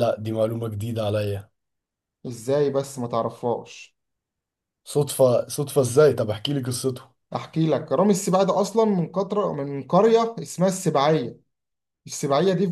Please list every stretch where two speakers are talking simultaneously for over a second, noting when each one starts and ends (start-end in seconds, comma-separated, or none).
none